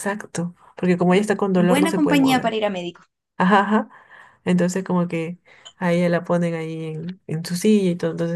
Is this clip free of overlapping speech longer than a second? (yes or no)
no